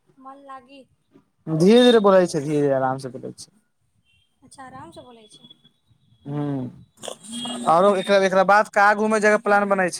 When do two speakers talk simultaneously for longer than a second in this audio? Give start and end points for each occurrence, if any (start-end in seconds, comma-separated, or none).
none